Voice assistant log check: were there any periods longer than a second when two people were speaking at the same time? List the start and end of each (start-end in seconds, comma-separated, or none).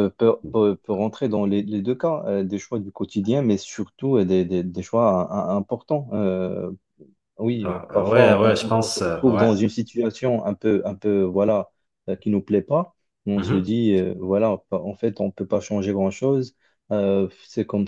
7.6-9.5